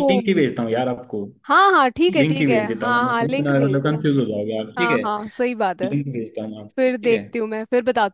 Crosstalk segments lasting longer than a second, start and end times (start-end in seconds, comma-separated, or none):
2.2-4.0